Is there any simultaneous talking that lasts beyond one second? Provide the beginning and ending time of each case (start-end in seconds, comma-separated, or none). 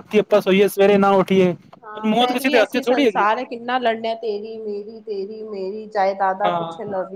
2.0-3.2